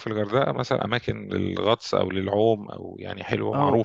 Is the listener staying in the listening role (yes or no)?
no